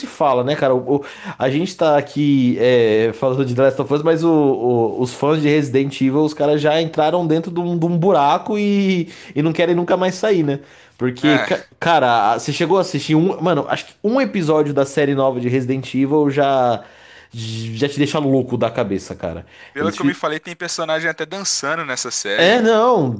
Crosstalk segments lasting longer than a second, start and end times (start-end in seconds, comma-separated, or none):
none